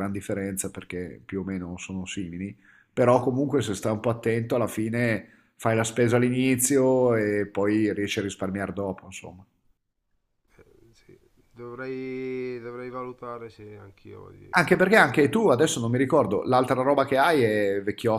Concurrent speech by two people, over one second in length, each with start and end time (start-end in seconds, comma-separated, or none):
none